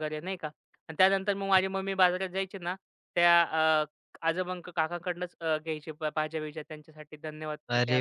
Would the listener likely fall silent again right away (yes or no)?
no